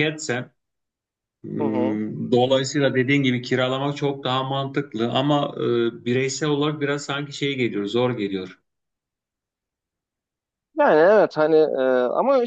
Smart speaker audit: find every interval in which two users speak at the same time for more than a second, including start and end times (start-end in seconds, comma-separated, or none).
none